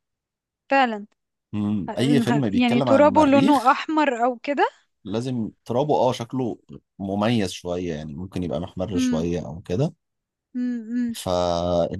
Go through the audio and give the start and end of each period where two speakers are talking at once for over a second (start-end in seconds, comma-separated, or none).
1.9-3.8